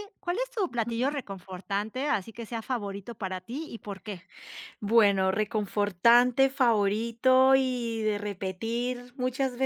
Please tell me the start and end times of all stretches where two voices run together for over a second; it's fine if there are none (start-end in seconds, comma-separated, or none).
none